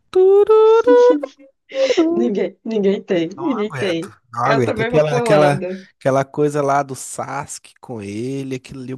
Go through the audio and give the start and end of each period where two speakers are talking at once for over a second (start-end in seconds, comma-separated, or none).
3.4-5.9